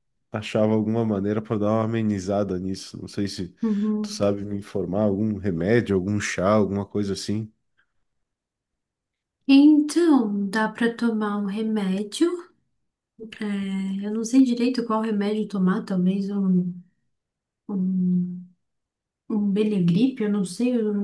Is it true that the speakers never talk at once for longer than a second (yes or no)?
yes